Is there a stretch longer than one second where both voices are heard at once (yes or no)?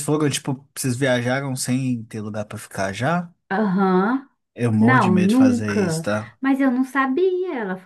yes